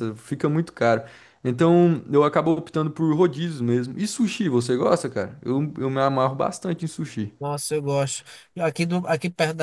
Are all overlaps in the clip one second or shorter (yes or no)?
yes